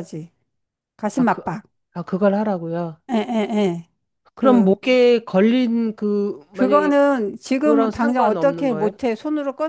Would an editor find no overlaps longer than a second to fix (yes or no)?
no